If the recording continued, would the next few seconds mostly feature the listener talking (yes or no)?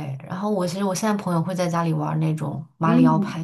yes